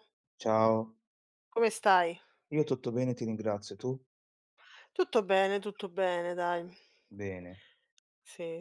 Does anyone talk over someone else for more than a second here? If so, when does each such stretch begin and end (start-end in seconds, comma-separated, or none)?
none